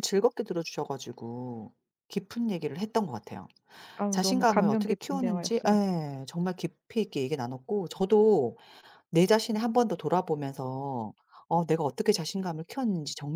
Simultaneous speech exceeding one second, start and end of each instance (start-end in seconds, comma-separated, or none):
4.1-5.8